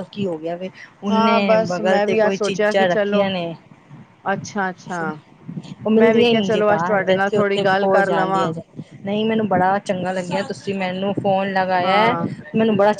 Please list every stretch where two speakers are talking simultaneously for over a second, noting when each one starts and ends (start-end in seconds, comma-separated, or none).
1.1-3.2, 6.0-8.4